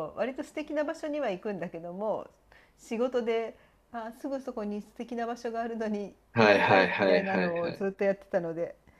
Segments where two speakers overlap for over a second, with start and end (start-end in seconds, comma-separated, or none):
6.3-7.9